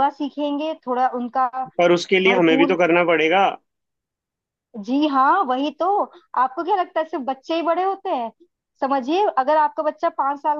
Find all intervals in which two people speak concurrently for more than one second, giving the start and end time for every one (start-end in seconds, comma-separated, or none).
none